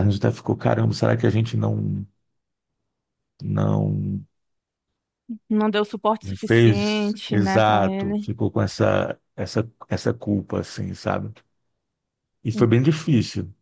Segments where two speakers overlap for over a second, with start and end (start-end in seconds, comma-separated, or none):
6.2-8.3